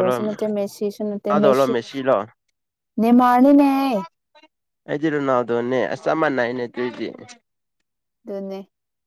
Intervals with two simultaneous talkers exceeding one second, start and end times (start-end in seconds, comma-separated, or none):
none